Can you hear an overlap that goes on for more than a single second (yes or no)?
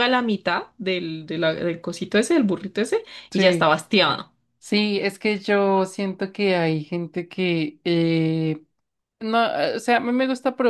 no